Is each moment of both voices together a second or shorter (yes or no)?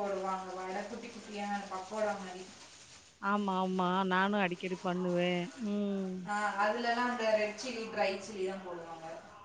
yes